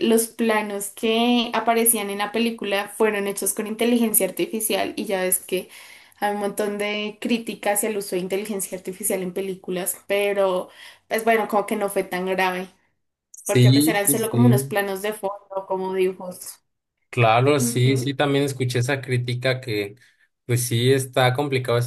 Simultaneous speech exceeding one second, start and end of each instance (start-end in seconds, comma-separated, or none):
13.4-14.7